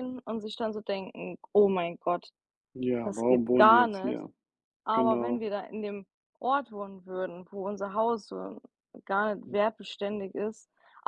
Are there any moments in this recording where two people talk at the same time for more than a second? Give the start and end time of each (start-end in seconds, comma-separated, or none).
3.0-4.2